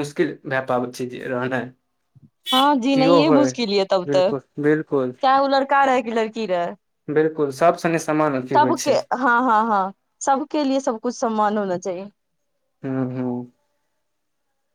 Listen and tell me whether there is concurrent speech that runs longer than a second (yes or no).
no